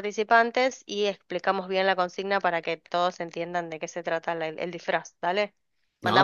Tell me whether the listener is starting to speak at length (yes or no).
no